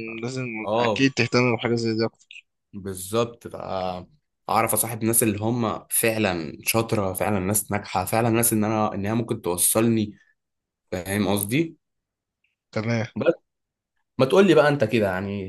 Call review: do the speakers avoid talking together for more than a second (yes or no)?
yes